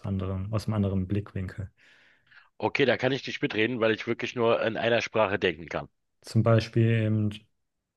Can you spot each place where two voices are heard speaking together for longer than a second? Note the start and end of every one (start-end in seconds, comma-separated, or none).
none